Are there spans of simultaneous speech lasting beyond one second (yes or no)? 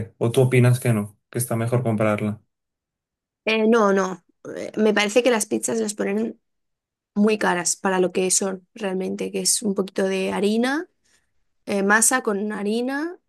no